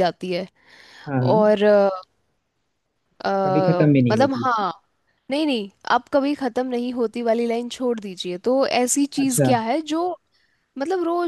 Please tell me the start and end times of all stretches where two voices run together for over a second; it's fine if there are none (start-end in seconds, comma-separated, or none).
none